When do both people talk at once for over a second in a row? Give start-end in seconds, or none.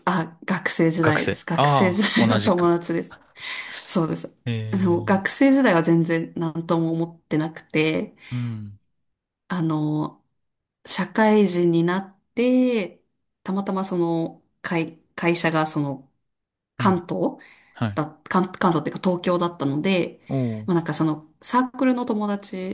1.0-2.7